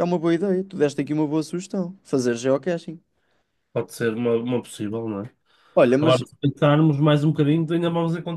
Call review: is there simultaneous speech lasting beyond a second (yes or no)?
no